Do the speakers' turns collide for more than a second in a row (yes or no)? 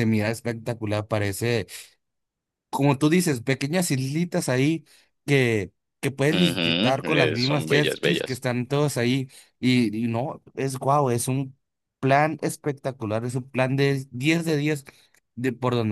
yes